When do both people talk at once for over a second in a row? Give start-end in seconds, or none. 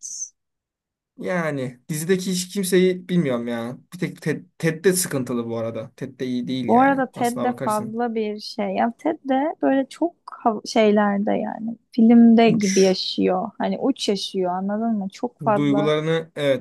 6.7-8.0